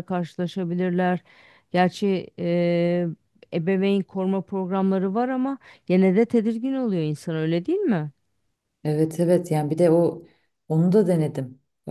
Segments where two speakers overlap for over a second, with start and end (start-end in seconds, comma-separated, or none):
none